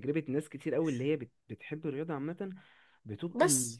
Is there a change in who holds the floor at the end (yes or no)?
no